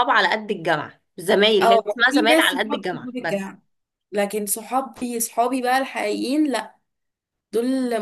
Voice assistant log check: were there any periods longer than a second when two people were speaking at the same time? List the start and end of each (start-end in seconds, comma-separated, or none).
1.6-3.5